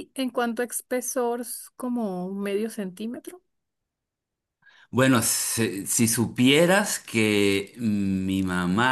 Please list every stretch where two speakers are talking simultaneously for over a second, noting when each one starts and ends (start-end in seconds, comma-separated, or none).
none